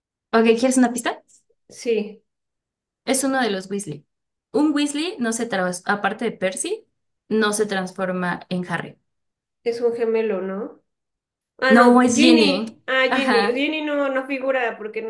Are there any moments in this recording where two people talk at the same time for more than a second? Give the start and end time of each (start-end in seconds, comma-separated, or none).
11.7-13.7